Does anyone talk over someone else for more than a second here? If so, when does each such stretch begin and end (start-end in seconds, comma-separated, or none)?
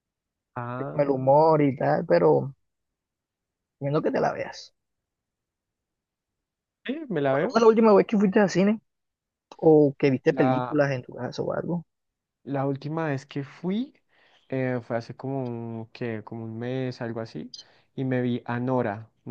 none